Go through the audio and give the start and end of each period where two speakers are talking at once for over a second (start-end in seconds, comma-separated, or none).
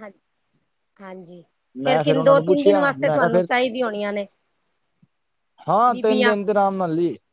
1.9-3.5